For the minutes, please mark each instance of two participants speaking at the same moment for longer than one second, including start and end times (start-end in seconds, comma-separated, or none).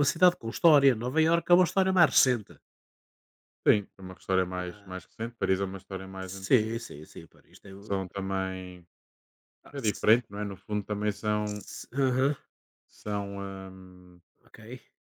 none